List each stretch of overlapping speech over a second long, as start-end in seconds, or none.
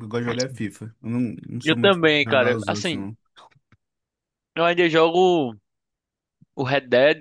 1.6-3.0